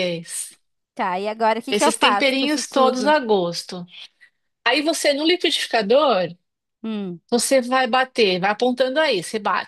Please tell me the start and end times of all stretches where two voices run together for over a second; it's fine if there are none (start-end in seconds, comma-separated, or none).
1.7-3.1